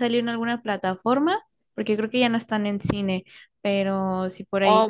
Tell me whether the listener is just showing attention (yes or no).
no